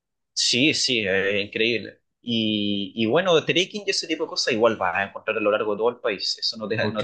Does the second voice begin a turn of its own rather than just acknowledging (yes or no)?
yes